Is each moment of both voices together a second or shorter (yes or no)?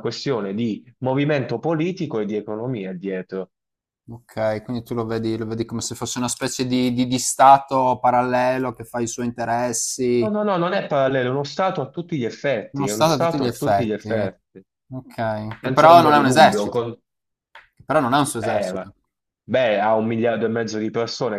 no